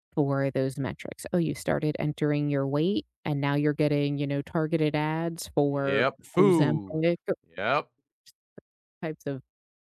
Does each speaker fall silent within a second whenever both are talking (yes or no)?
no